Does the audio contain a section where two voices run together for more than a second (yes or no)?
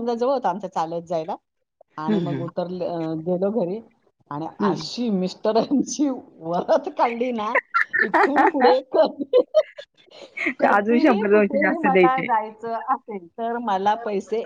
yes